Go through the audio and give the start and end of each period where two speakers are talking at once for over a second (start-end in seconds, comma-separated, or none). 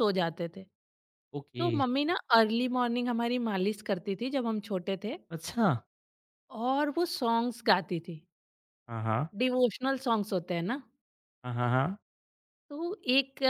none